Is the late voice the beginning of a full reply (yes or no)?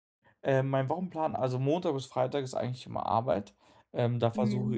no